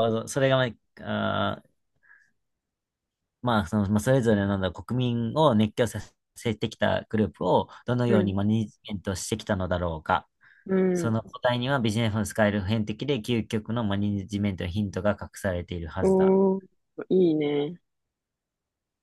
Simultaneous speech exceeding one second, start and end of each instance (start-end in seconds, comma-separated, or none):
none